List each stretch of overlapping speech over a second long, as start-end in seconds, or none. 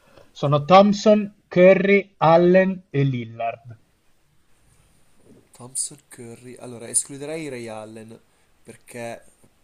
none